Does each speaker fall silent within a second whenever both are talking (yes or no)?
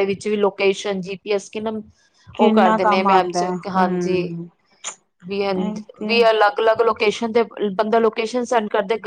no